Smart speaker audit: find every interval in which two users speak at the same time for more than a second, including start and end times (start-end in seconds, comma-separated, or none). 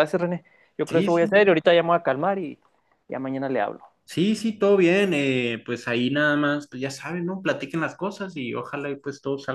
none